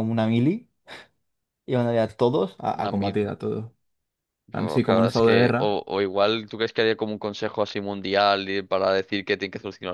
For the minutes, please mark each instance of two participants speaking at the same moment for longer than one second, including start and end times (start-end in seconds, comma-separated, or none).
4.5-5.8